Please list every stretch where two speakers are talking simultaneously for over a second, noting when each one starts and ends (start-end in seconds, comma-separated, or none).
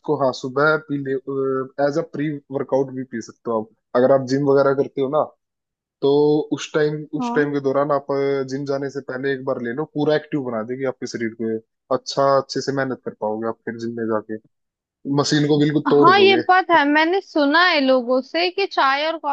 none